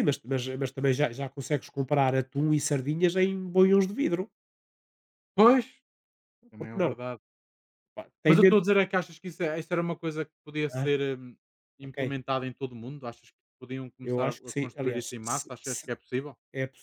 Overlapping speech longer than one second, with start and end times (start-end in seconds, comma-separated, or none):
14.0-15.9